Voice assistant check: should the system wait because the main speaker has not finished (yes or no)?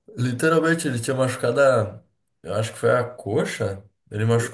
yes